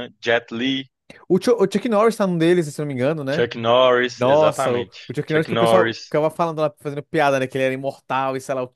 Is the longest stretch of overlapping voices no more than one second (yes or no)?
no